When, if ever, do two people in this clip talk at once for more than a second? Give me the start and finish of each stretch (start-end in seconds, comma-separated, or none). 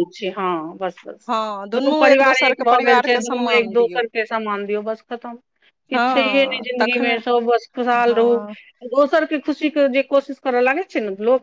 2.3-4.0